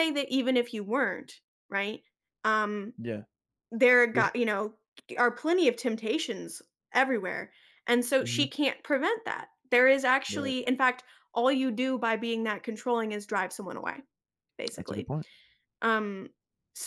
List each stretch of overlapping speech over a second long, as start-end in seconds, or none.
none